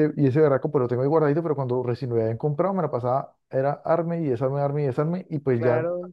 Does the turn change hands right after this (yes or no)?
no